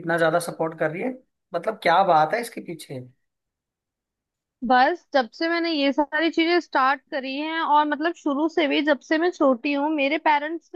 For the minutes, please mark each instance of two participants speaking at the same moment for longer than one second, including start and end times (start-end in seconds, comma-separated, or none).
none